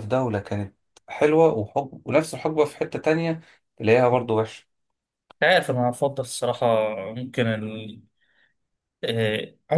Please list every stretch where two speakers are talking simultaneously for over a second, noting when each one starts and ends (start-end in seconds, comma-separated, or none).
none